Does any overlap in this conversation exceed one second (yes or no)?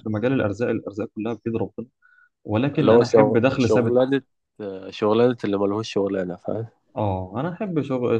yes